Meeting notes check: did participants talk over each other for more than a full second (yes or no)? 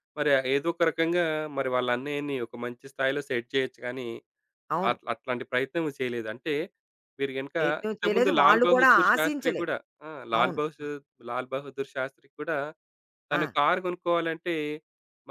yes